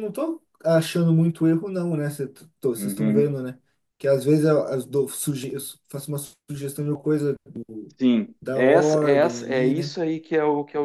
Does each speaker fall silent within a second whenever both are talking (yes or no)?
no